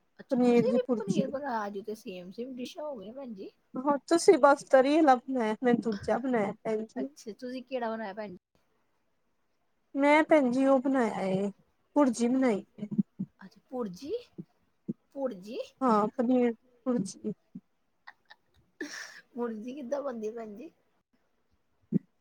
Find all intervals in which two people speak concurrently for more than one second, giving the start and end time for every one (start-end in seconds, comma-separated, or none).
none